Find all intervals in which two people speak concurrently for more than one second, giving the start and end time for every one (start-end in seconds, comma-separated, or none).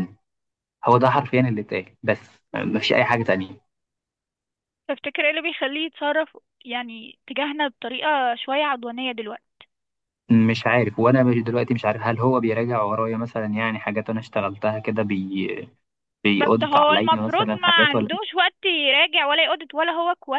16.4-18.1